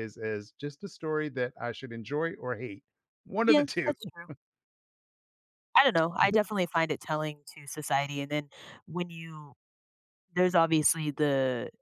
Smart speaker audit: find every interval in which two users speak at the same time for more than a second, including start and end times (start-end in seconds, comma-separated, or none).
none